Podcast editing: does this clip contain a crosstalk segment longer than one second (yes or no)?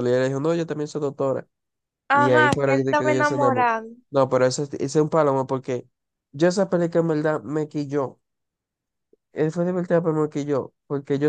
yes